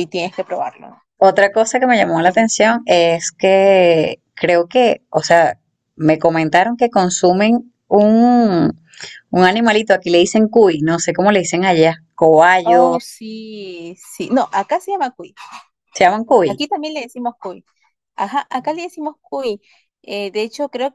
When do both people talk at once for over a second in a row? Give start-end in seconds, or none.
none